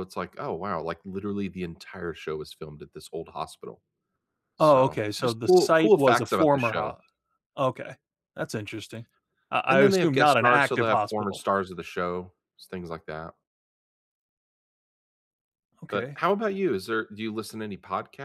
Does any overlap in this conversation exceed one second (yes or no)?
yes